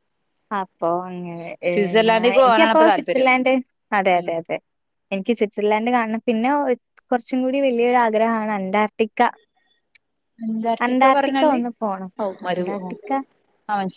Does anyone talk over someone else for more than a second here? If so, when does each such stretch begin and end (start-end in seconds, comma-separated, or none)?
1.7-3.3